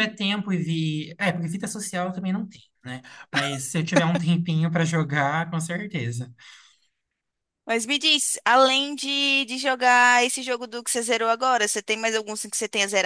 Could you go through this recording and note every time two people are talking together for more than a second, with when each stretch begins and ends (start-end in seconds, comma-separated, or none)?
none